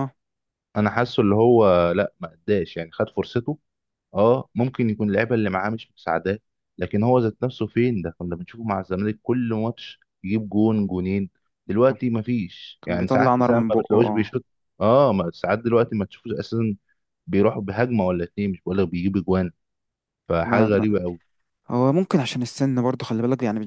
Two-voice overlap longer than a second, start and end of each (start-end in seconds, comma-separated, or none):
12.8-14.4